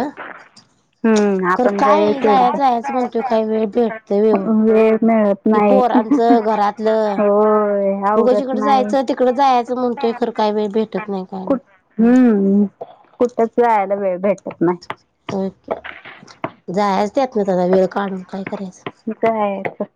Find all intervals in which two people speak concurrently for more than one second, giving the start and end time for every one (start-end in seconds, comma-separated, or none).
1.6-3.3